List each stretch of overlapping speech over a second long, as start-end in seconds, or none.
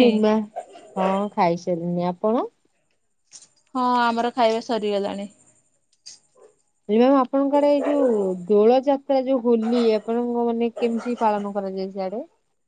none